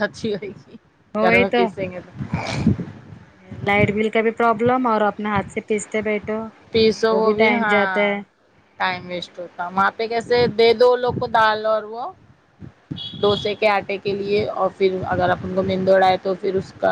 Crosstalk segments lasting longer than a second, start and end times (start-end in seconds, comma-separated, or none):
none